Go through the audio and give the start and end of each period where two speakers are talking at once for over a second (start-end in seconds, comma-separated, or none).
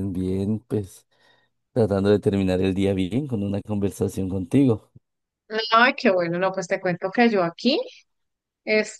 none